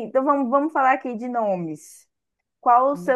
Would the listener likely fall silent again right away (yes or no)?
yes